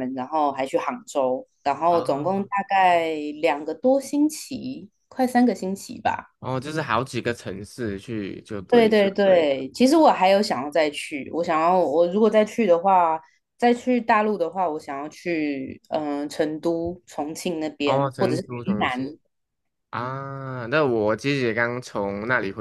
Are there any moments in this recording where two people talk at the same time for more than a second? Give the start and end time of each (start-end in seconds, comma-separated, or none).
17.9-19.2